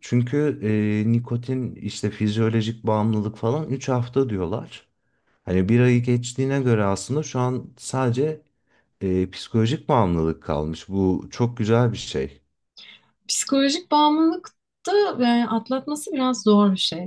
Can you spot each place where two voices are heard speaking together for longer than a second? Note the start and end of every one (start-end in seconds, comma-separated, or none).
none